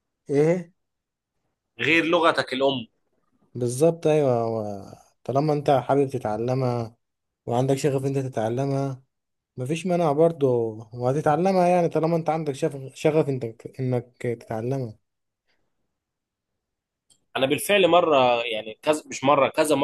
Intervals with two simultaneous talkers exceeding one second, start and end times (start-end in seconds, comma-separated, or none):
none